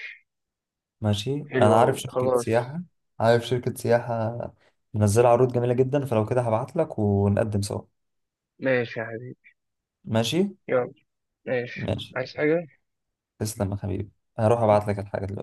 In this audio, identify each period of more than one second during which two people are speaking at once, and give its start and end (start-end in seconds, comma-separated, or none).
1.5-2.7